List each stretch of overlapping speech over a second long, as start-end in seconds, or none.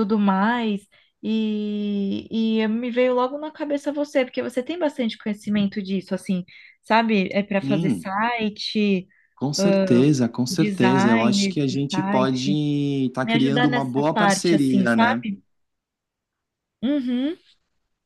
10.5-12.5, 13.2-15.2